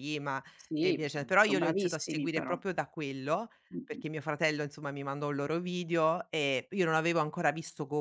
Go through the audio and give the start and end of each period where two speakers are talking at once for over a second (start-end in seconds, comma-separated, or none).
0.8-2.6